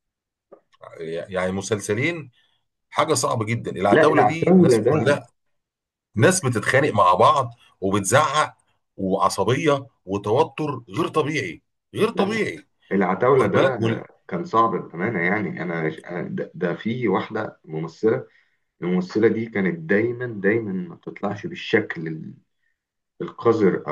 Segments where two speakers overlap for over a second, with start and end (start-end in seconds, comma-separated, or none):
3.9-5.2